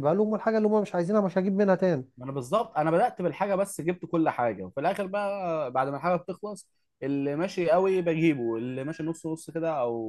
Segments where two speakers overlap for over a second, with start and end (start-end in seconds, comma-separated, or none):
none